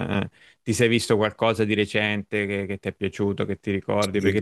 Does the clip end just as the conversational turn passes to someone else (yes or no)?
no